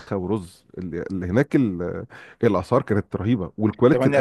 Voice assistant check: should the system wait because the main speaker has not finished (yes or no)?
no